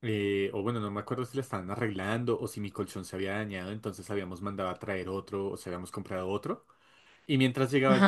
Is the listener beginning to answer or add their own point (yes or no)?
no